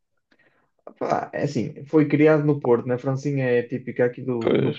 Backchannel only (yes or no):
yes